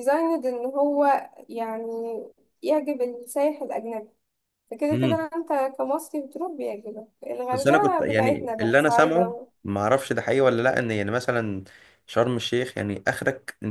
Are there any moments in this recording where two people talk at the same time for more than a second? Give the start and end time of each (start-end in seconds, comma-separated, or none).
7.5-9.5